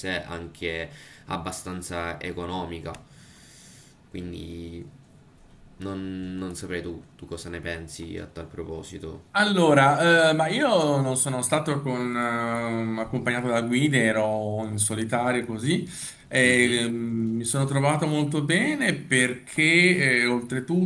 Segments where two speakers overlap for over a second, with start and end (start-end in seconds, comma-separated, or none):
none